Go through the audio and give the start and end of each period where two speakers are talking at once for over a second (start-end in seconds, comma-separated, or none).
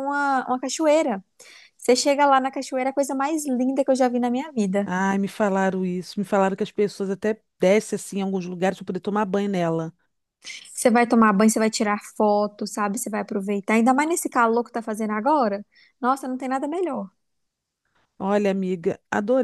none